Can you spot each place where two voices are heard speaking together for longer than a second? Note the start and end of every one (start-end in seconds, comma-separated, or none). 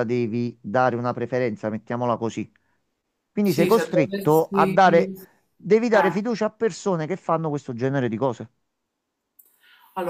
3.4-5.1